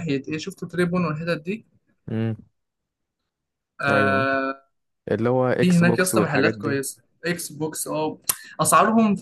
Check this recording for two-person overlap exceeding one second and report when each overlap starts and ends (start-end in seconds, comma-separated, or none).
5.6-6.8